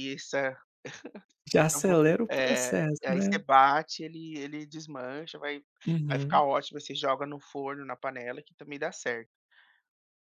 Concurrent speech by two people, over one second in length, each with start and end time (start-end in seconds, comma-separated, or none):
1.6-3.4